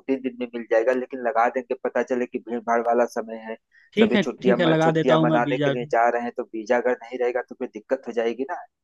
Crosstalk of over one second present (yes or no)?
yes